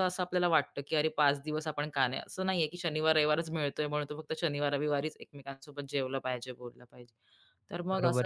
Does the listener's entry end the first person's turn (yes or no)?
yes